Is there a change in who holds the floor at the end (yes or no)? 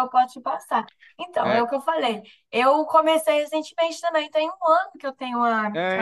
yes